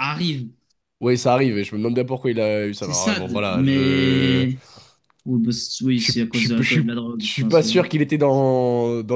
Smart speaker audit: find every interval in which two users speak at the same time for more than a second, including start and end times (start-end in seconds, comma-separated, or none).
2.8-4.5, 6.0-7.7